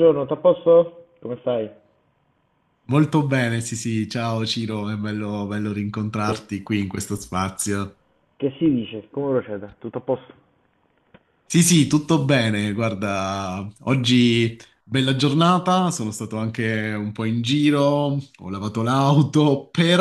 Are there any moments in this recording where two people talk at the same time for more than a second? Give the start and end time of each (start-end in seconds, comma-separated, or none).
none